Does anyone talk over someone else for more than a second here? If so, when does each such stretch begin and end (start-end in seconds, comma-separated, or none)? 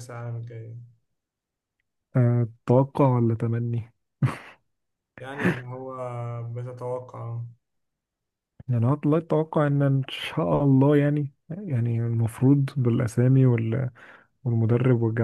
none